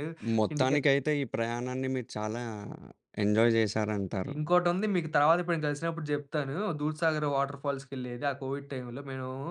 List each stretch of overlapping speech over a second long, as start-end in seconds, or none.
none